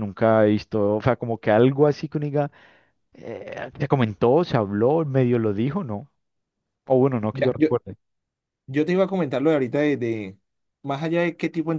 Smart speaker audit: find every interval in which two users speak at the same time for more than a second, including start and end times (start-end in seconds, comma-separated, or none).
none